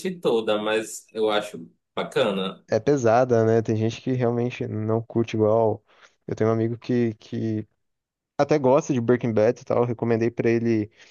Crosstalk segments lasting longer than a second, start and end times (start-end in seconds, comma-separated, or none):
none